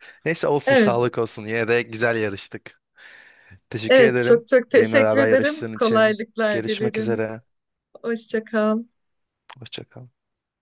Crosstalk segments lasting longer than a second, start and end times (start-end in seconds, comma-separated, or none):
3.9-7.2